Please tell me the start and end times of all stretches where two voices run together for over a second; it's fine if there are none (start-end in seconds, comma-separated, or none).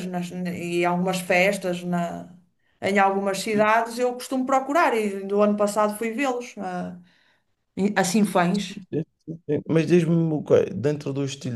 none